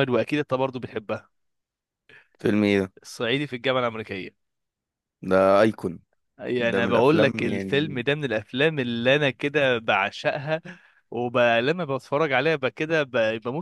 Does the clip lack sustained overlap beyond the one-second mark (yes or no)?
no